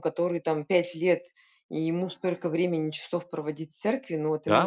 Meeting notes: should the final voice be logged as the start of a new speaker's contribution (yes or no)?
yes